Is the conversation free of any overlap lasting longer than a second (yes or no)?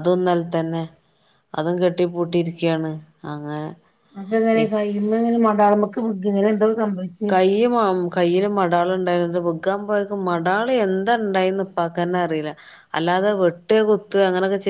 yes